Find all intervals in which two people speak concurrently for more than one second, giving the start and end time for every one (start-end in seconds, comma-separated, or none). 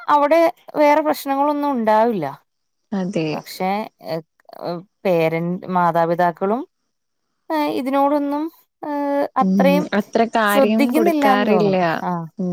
10.5-11.8